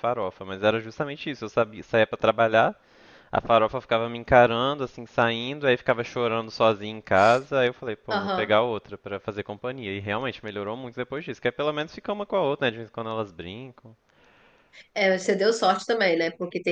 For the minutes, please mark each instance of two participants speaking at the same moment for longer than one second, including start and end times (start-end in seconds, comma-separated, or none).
none